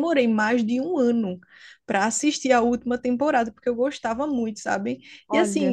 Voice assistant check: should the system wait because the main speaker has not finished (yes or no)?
yes